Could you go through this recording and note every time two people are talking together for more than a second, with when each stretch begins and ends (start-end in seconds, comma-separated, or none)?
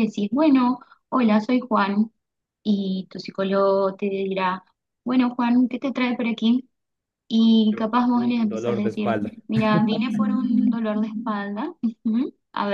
7.7-9.3